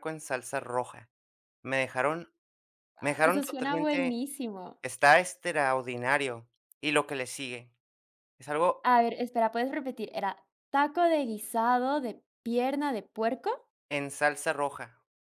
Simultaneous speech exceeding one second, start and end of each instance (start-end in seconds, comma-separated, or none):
3.0-4.2